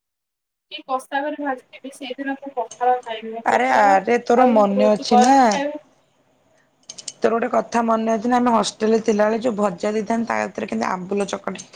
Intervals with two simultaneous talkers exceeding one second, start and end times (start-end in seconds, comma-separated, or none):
3.5-5.3